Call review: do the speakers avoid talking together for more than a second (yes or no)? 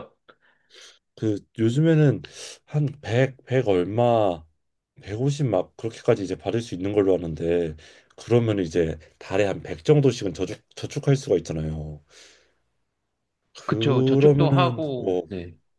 no